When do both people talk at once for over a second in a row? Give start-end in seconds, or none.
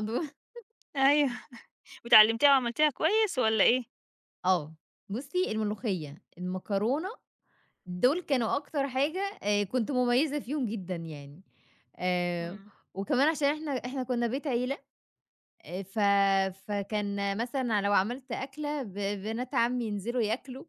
none